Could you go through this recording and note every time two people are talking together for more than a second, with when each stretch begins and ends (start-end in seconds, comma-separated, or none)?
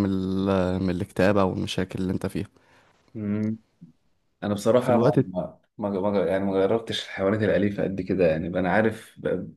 none